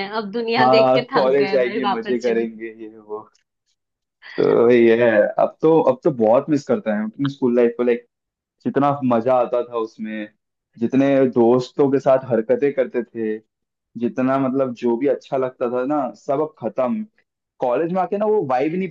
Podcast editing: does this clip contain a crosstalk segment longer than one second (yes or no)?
yes